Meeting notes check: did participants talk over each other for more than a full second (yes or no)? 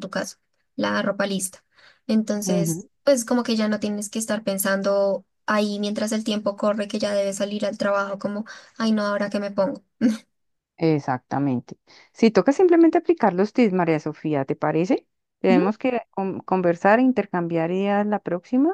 no